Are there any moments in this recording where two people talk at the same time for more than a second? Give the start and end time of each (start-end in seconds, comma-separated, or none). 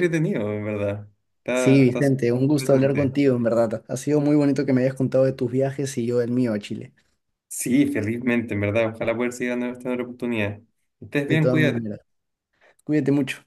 1.5-3.1